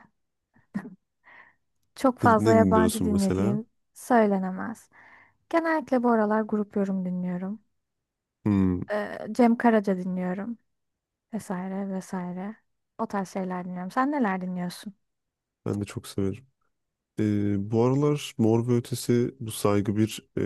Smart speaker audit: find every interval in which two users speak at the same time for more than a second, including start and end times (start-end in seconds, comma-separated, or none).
2.2-3.6